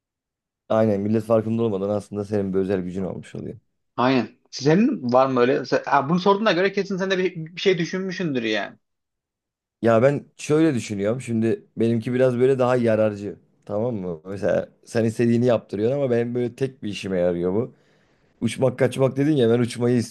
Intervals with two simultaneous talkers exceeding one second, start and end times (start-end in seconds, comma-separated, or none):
none